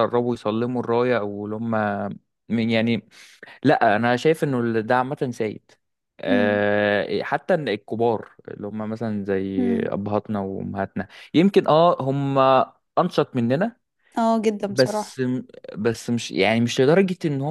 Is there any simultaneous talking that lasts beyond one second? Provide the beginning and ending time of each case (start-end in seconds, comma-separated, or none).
none